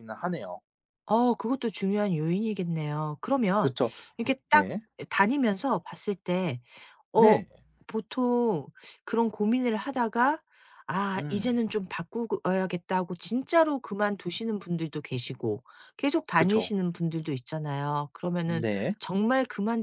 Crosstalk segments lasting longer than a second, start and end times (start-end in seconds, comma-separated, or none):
none